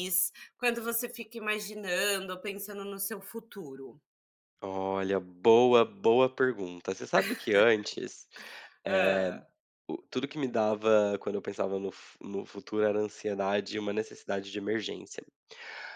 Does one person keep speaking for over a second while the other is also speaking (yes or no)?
no